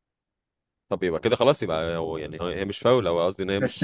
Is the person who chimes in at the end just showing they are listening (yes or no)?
no